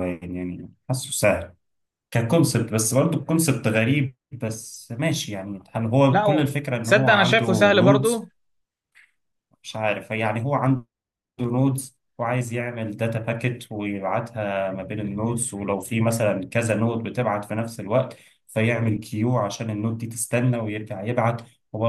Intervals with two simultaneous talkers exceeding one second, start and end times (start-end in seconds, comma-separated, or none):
6.1-8.2